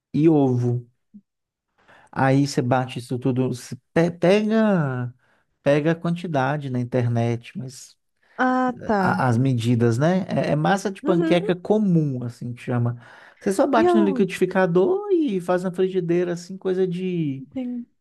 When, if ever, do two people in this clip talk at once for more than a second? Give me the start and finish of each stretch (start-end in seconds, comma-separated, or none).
none